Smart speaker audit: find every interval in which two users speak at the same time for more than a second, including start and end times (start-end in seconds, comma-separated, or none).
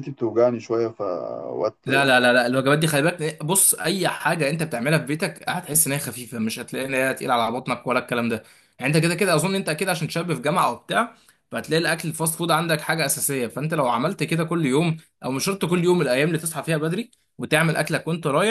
none